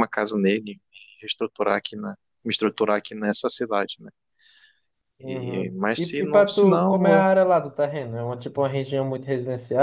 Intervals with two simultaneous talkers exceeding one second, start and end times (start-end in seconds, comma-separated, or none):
5.2-7.3